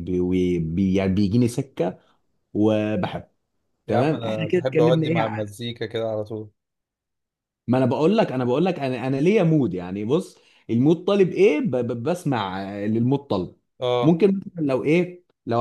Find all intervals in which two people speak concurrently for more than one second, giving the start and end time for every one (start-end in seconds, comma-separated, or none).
3.9-5.2